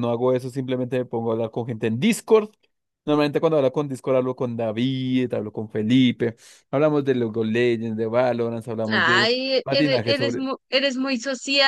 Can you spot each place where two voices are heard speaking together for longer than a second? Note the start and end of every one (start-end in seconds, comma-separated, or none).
8.9-10.5